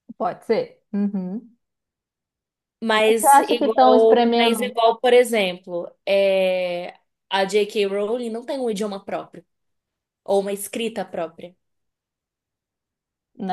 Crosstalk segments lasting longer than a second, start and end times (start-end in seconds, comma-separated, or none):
3.0-4.8